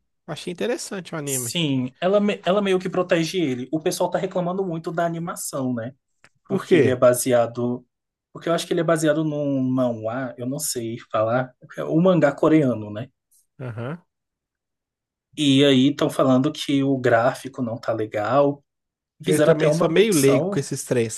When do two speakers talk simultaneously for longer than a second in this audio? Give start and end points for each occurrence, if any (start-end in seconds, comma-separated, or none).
19.2-20.7